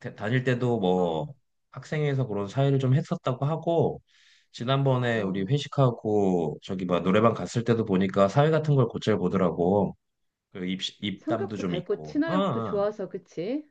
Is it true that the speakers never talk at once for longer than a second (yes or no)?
no